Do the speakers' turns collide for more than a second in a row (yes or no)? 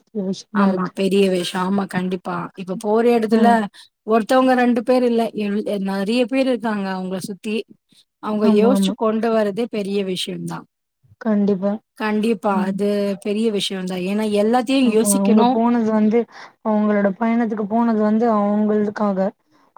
no